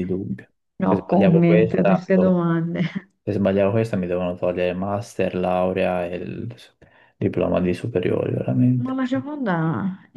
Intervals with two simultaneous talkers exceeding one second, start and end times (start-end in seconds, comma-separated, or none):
0.9-2.1